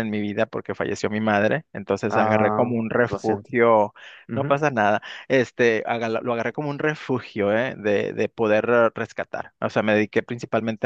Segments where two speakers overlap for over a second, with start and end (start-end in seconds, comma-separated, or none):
2.1-3.5